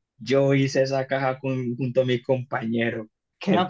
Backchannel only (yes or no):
no